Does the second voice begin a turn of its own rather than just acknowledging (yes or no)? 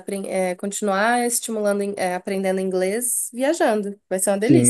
yes